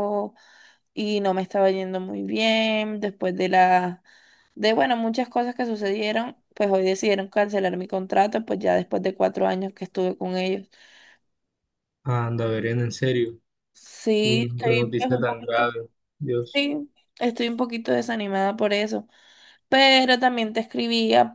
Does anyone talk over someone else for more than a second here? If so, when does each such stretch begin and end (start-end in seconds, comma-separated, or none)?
14.2-15.8